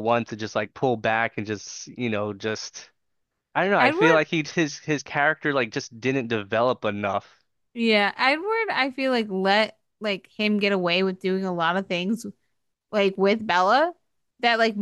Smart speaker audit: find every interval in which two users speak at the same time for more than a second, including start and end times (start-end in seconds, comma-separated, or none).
none